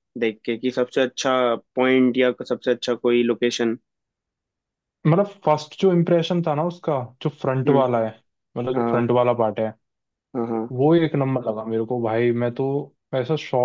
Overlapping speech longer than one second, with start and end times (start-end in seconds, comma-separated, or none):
none